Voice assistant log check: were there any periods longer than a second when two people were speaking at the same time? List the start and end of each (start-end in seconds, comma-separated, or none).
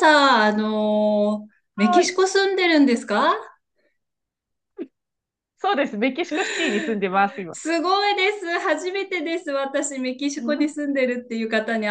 none